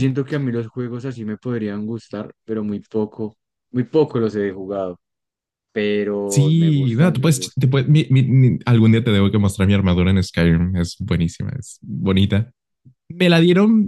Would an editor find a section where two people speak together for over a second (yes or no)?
yes